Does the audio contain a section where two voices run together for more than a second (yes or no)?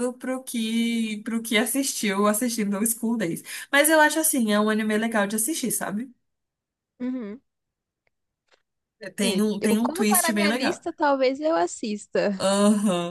yes